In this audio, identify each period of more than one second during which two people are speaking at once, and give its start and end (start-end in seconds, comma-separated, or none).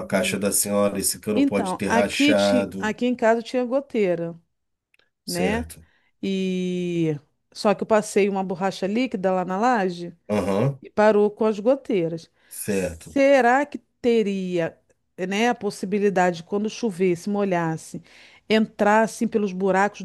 1.3-3.0